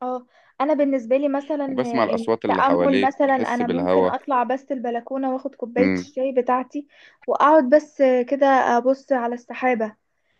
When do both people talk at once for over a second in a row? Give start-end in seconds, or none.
2.1-4.2